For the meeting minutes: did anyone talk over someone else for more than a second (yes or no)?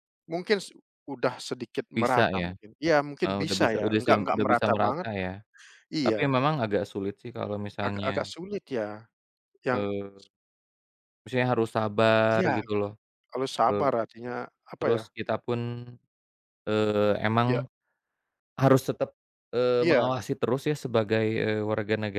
yes